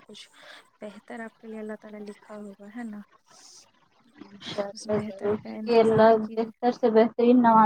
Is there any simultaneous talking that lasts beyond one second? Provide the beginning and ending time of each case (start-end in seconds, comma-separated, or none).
4.7-6.5